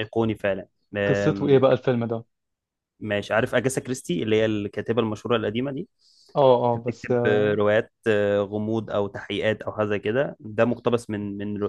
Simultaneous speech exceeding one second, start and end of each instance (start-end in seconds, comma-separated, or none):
none